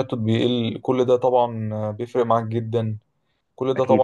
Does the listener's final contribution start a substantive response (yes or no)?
no